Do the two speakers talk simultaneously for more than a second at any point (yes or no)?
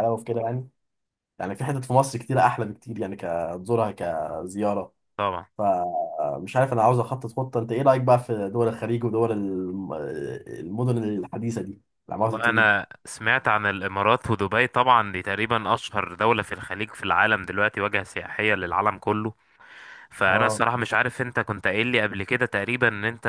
no